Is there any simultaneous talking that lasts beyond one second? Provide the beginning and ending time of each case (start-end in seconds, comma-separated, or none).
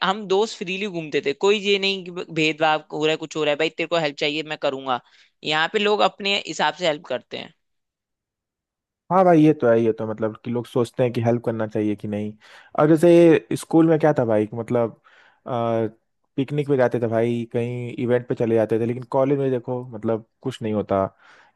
none